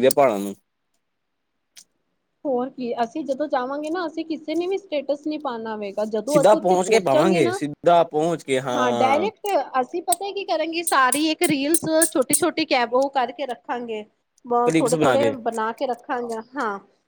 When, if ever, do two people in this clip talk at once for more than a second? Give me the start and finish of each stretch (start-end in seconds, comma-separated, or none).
6.3-7.6